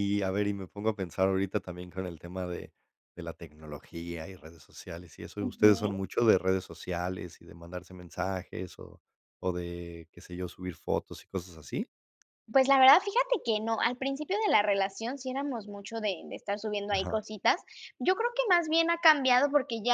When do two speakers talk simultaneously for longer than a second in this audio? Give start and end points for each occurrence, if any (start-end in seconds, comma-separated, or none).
none